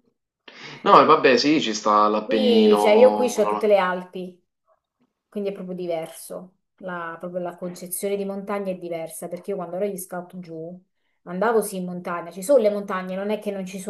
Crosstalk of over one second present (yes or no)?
yes